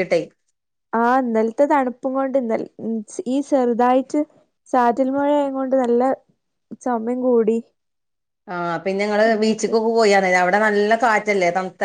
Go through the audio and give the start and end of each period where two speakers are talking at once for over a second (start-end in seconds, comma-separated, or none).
none